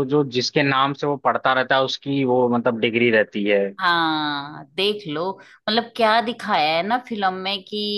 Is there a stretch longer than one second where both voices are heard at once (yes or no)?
no